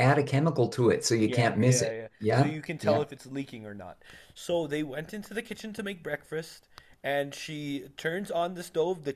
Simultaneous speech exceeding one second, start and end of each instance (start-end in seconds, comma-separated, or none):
1.2-3.0